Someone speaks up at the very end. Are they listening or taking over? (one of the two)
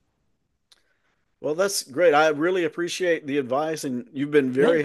listening